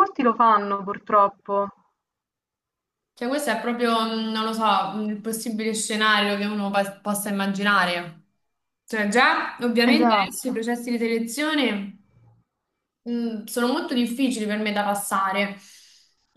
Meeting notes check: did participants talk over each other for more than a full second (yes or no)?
no